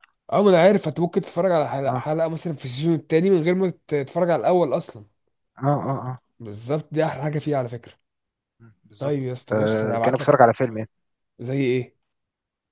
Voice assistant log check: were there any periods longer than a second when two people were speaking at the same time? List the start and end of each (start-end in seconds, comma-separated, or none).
9.0-10.5